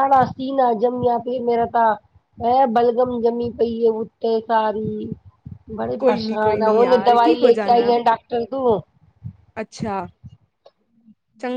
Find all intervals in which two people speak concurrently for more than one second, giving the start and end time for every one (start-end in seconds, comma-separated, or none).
6.0-7.9